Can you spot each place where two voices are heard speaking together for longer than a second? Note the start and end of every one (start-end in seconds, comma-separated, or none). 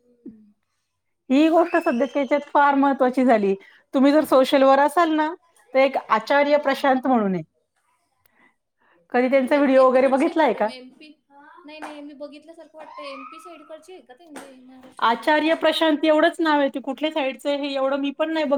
9.3-10.7